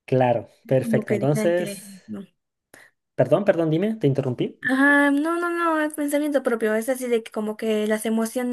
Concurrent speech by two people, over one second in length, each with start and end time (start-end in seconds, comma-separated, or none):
0.6-2.2